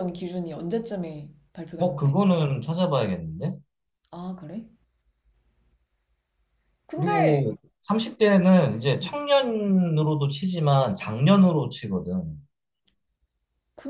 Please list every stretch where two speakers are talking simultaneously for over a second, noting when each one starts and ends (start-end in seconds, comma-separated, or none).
none